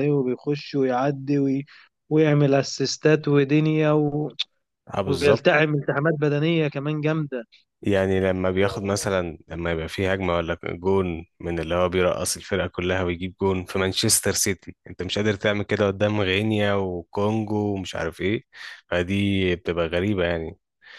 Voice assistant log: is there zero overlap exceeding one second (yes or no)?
yes